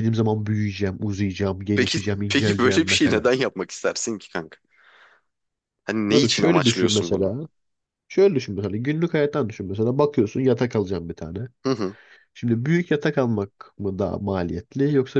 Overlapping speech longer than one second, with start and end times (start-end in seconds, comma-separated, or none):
1.7-3.2, 6.1-7.3